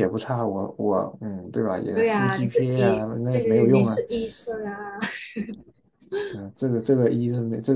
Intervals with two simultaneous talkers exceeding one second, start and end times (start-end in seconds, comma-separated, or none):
1.9-4.0